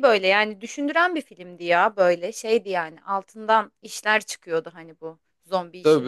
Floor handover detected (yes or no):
yes